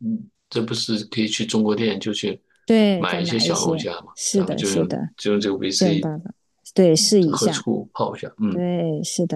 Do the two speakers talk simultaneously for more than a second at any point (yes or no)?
yes